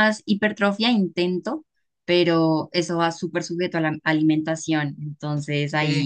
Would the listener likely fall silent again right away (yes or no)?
yes